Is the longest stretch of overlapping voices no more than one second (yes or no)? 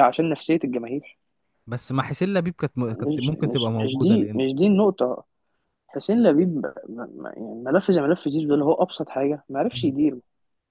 no